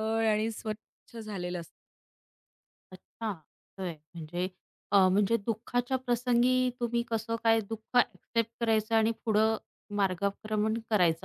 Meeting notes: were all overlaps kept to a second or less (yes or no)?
yes